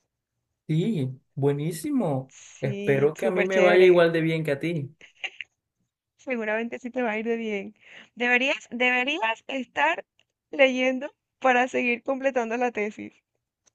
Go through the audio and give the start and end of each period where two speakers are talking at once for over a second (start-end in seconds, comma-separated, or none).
2.3-4.1